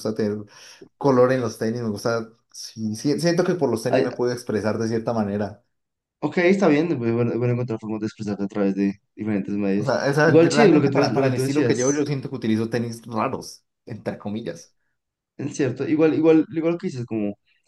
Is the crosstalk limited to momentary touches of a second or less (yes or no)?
no